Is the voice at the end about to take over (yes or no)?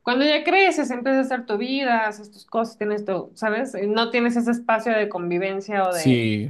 no